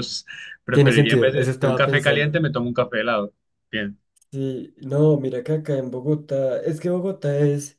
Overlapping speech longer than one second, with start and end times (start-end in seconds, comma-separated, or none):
0.7-2.4